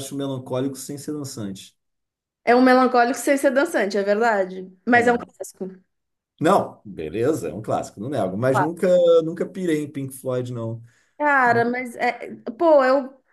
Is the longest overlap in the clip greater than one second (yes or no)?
no